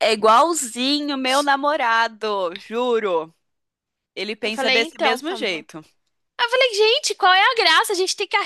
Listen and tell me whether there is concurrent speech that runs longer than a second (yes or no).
yes